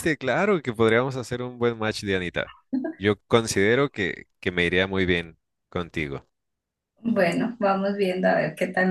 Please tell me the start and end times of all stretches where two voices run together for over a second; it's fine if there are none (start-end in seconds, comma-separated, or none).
none